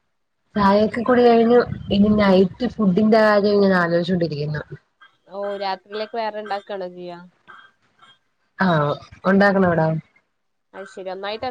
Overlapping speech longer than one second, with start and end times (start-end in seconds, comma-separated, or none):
none